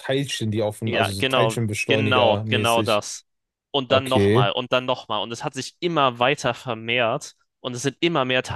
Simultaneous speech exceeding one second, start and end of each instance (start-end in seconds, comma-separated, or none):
0.8-3.0